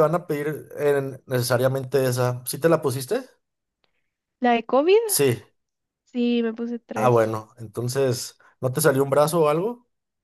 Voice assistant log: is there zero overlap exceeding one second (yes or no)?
yes